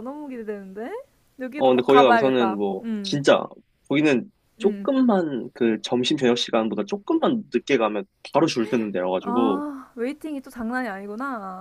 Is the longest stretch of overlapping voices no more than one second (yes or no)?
no